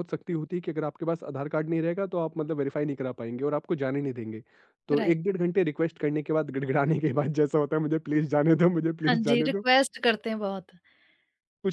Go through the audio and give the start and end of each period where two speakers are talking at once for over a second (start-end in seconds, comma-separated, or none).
none